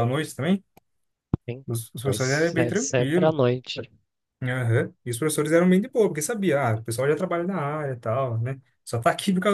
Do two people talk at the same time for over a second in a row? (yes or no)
yes